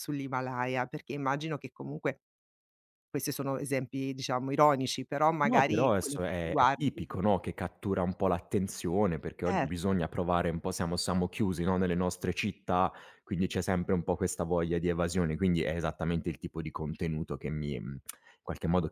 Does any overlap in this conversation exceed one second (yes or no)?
yes